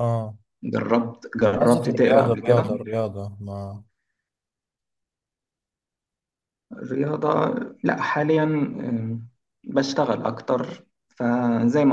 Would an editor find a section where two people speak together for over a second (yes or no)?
yes